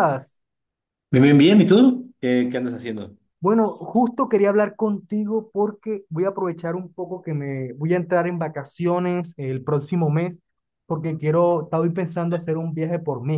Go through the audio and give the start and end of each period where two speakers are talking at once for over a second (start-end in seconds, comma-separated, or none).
none